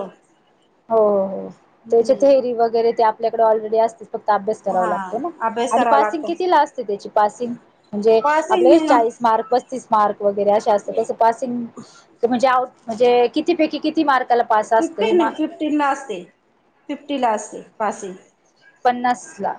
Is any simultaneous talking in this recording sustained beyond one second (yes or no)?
no